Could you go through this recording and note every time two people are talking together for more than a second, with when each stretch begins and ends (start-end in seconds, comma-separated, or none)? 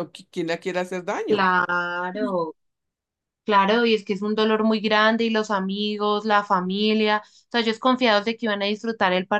none